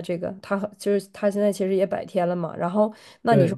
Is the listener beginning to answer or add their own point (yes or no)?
no